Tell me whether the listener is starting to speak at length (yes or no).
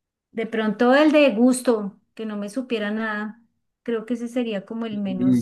yes